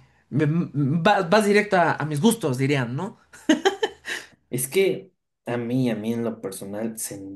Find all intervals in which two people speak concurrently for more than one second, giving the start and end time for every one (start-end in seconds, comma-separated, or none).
none